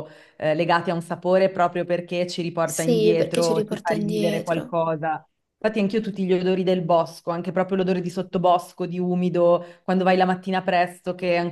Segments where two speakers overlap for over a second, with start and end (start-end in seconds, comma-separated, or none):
2.6-4.7